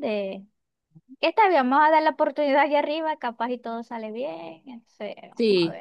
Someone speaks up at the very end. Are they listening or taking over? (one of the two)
taking over